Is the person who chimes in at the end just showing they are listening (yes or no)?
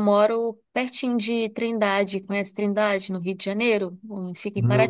no